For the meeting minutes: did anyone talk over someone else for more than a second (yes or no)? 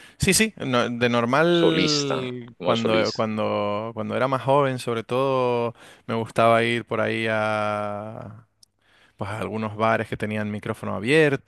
yes